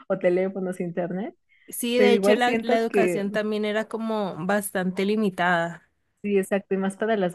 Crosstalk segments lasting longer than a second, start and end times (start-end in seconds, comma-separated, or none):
1.9-3.2